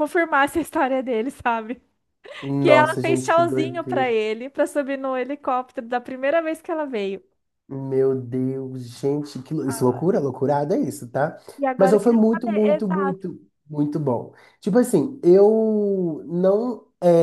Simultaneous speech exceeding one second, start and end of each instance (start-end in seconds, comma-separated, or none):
2.6-4.1, 11.8-13.2